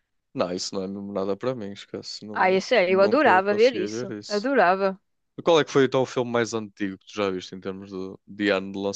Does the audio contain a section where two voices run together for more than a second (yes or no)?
yes